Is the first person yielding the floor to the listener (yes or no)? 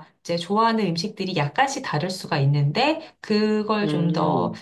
no